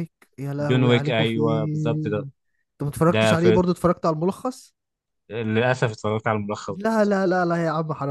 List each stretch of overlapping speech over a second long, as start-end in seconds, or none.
0.6-2.3